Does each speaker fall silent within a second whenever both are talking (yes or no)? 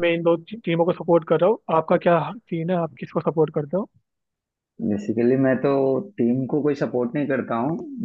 yes